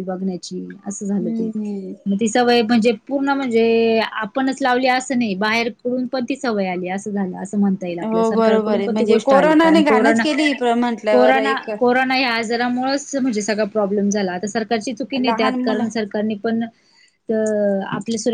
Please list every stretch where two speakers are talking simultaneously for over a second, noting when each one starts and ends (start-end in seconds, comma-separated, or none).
8.1-10.2